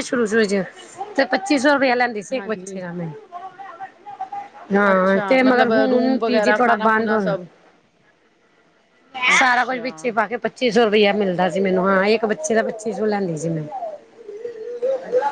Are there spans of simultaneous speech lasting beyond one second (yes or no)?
yes